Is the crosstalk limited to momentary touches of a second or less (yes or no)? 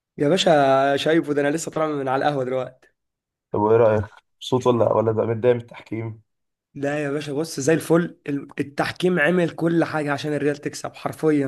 yes